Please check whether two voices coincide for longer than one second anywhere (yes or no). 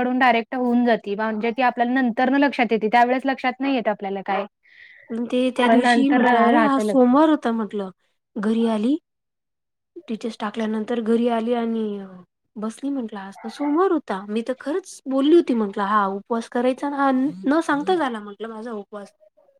yes